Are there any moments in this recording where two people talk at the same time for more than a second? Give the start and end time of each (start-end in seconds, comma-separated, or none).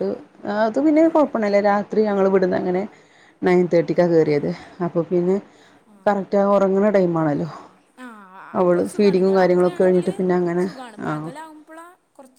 8.6-10.0